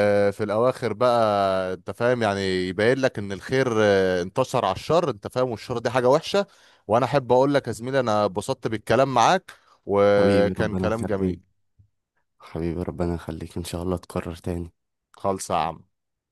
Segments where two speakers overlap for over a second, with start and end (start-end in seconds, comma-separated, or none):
10.0-11.4